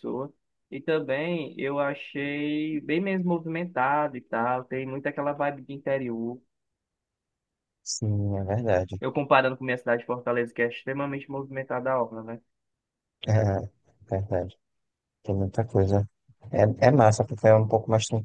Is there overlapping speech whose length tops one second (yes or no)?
no